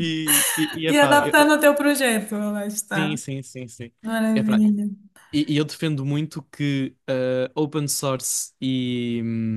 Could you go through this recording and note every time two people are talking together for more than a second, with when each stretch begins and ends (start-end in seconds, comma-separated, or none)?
none